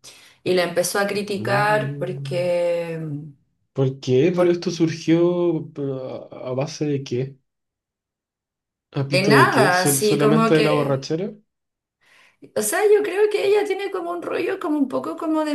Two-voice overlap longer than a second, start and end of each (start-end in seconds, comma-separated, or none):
1.1-2.6, 9.1-11.1